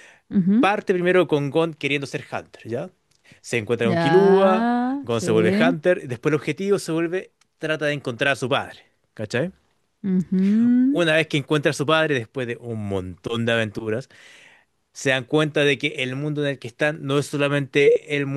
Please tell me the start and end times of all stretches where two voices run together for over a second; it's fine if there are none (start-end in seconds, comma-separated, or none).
3.8-5.8